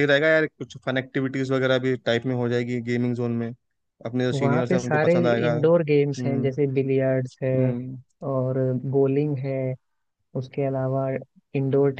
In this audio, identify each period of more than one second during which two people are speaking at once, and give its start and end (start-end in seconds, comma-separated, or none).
4.3-6.5